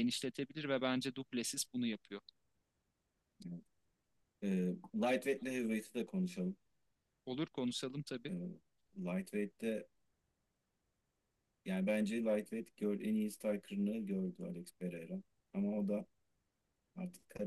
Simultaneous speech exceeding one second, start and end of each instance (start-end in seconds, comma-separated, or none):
none